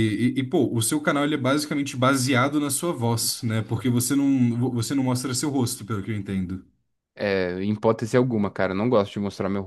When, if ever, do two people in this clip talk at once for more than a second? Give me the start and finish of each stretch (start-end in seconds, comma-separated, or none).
none